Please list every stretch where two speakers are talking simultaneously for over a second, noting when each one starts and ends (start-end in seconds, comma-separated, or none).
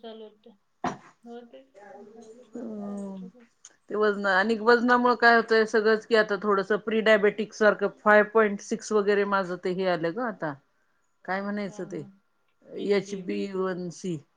none